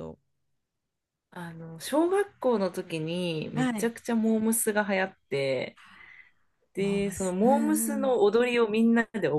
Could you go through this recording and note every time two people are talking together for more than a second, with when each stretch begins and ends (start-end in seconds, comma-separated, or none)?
6.8-8.2